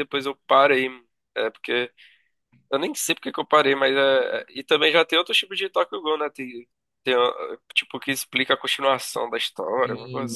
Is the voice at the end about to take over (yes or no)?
yes